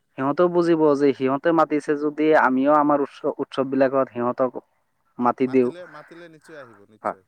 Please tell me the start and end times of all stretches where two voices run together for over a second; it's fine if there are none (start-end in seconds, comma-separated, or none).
none